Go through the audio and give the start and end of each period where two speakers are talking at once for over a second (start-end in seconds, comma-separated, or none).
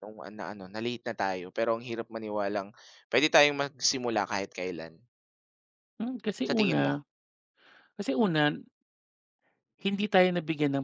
none